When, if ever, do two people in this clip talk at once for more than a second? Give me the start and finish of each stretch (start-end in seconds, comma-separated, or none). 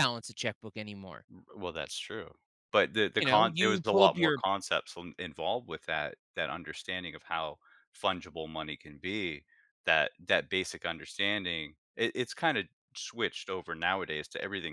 3.2-4.4